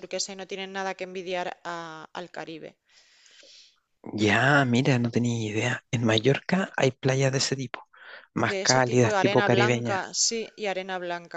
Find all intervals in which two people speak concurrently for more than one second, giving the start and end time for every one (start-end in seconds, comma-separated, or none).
8.4-10.1